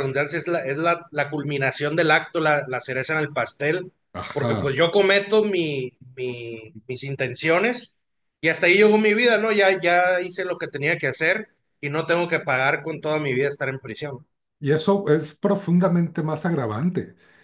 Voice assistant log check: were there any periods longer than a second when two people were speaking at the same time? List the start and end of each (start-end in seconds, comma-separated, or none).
none